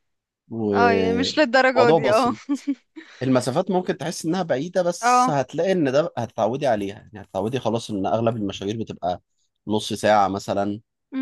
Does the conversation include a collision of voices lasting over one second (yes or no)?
yes